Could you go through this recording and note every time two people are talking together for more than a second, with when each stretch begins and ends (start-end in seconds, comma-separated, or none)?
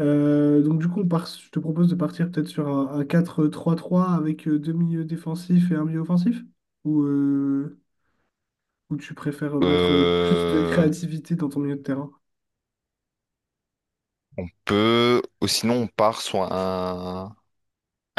9.6-10.9